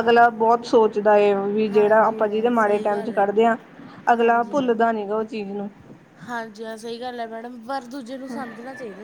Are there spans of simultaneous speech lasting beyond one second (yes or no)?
yes